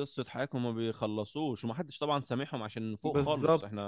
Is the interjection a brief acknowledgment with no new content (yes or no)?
no